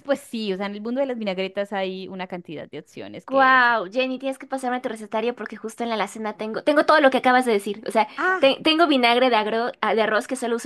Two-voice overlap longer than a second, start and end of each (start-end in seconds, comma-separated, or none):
none